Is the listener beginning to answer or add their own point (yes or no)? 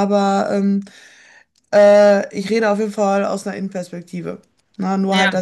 no